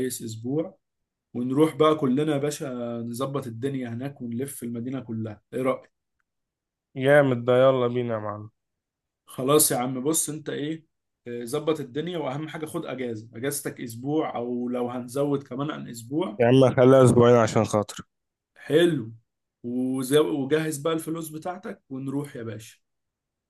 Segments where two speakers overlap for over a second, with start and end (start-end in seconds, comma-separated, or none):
none